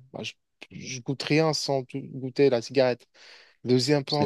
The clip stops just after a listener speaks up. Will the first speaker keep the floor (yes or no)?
yes